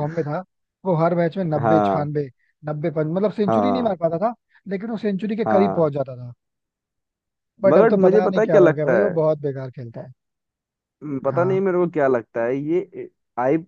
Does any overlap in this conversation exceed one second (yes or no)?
yes